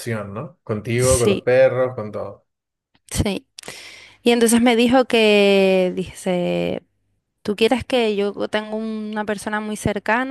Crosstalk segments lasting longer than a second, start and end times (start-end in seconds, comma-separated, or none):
none